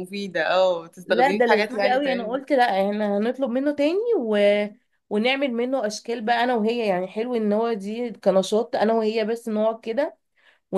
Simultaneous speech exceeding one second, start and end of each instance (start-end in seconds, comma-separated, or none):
1.0-2.4